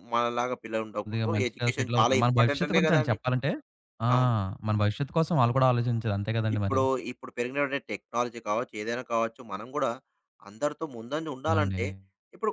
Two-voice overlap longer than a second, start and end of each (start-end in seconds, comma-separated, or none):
1.4-3.2